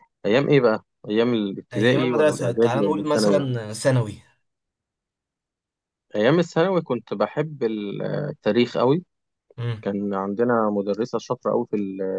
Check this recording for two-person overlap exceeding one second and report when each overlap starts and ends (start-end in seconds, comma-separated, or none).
1.7-3.5